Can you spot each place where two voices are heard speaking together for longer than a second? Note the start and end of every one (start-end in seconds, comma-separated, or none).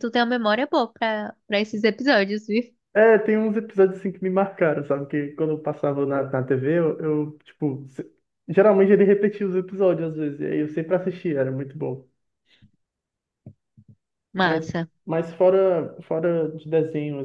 none